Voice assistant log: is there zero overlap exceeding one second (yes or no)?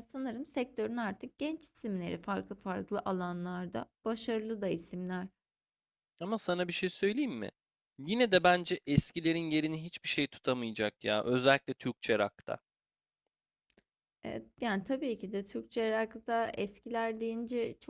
yes